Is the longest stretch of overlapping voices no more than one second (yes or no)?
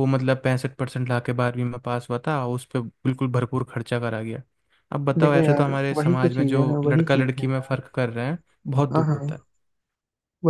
no